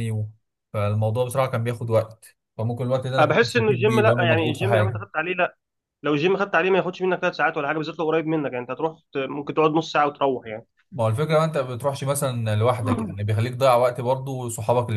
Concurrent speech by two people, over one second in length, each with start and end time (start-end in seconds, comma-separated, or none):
3.2-5.0